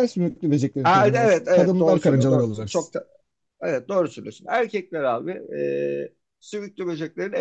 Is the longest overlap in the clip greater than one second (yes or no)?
yes